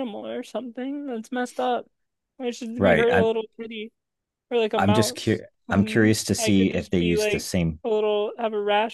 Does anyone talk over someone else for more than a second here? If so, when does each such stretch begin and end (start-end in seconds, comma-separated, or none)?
4.8-7.5